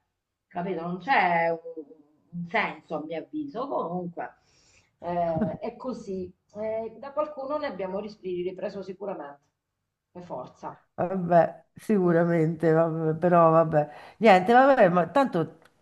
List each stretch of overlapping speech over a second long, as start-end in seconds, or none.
none